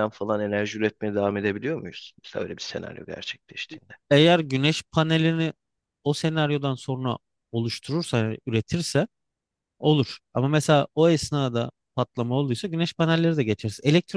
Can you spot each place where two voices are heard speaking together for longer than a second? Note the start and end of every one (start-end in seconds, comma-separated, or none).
none